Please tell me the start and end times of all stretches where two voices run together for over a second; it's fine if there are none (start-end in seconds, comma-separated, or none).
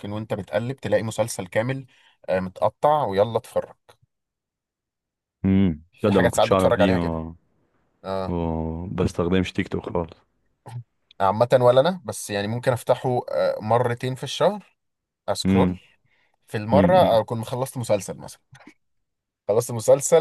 6.0-7.3